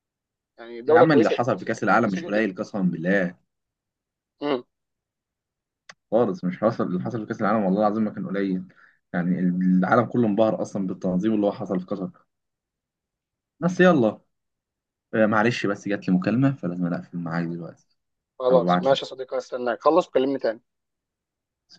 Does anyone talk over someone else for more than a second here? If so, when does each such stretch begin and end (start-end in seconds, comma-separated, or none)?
0.9-2.5